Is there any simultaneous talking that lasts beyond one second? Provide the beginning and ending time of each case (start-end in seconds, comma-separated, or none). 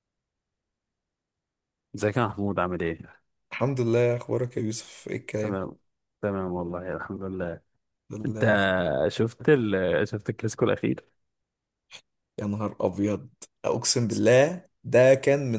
none